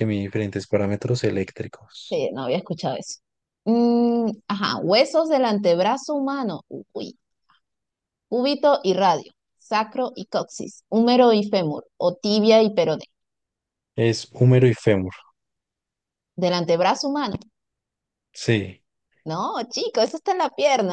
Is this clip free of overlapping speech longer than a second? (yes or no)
yes